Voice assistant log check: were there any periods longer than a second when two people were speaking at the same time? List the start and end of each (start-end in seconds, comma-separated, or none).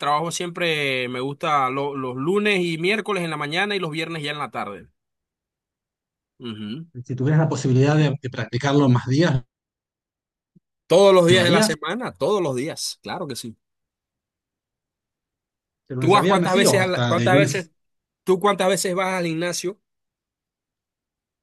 16.0-17.7